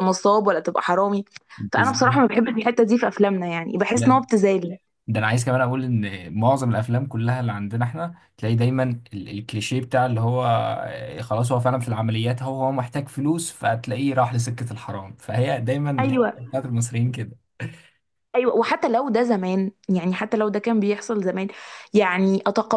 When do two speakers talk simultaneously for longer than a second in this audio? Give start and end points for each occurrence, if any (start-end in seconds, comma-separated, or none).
none